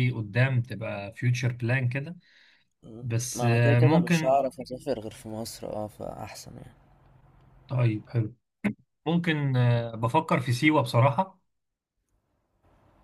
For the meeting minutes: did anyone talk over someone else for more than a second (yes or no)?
yes